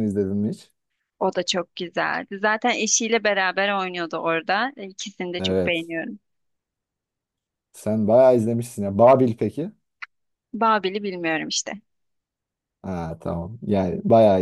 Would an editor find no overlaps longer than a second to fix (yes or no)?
yes